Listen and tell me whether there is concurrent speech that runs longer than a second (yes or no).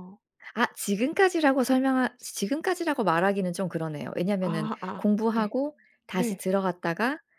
yes